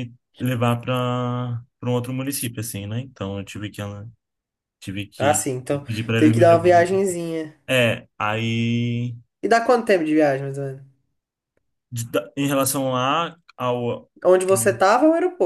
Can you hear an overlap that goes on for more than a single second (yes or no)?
yes